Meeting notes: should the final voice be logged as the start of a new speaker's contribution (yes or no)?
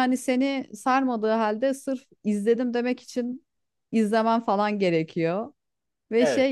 no